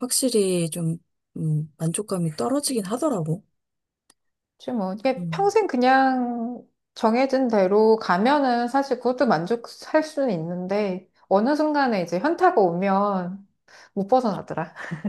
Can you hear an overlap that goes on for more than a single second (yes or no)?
no